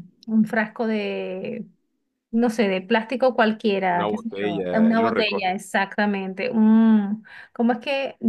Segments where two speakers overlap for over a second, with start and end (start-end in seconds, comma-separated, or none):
3.9-5.6